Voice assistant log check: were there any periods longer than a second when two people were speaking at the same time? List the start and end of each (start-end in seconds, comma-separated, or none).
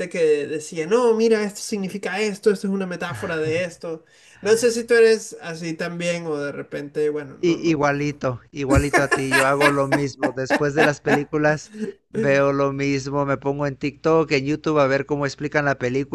none